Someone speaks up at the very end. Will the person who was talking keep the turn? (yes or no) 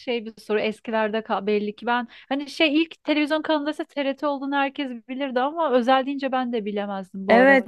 no